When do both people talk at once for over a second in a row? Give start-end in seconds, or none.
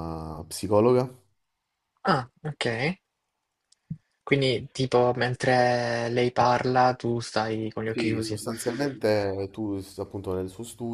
none